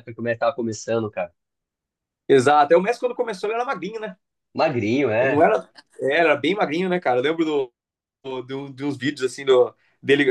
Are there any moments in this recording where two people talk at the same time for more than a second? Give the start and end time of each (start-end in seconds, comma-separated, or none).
none